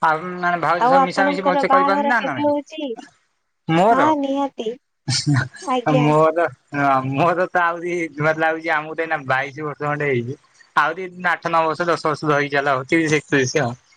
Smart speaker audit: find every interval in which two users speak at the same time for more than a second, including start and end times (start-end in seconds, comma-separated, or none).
0.8-2.5